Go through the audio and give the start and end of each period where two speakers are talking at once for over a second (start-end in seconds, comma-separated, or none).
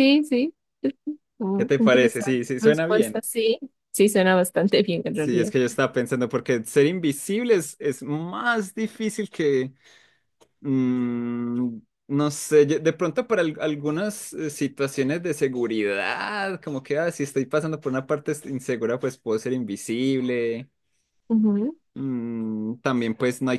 1.5-3.2